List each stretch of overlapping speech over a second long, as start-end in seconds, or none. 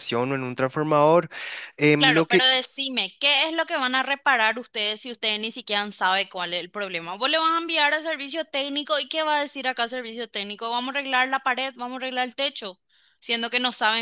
none